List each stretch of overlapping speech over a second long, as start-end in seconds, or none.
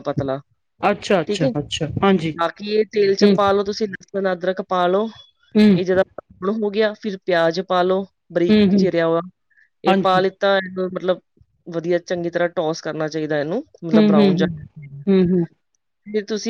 none